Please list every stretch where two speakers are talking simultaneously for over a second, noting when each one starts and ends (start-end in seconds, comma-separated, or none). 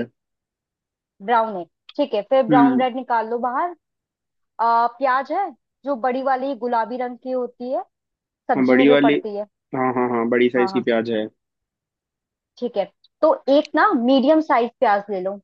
none